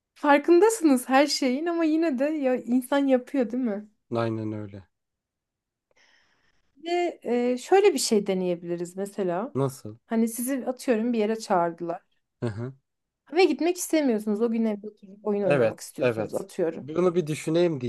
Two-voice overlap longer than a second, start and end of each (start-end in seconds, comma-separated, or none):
15.4-16.9